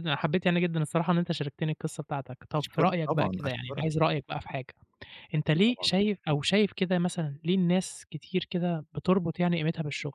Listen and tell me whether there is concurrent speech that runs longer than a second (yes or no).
yes